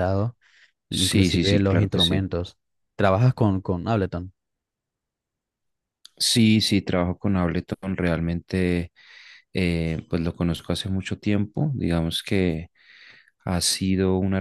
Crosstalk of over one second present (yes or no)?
yes